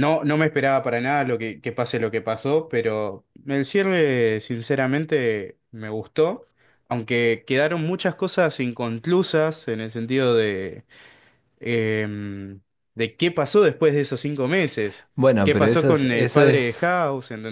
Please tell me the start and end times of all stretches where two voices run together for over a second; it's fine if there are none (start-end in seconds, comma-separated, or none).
15.1-17.0